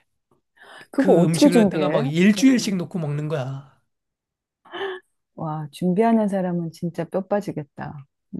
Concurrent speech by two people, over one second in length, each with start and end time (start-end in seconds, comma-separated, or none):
1.0-2.7